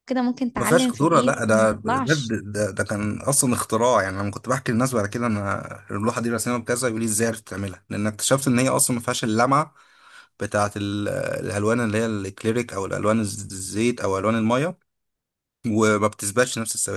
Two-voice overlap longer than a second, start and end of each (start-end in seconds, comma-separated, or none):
0.6-2.4